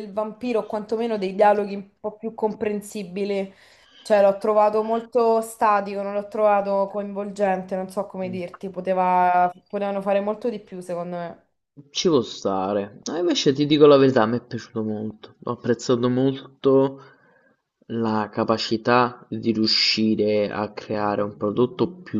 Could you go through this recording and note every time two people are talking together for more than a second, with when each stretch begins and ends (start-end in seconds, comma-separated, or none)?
none